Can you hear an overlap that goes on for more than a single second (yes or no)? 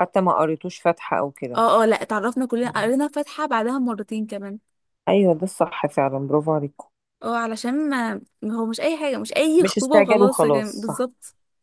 yes